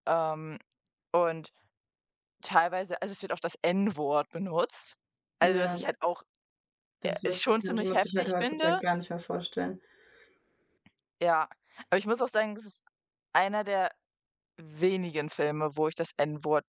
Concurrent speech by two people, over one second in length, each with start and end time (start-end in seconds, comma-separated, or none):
7.0-8.8